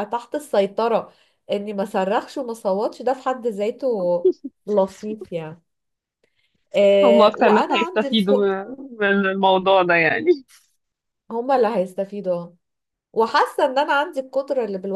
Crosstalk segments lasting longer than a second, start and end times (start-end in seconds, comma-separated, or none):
7.0-8.3